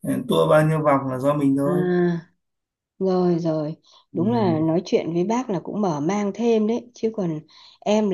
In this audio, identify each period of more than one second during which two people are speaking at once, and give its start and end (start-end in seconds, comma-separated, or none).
none